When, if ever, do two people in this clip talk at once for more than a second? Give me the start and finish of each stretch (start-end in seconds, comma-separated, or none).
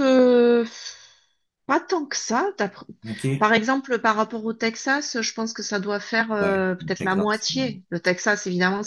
6.4-7.8